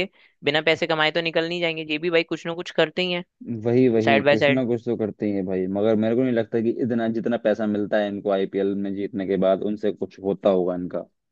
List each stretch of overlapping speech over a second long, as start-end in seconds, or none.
none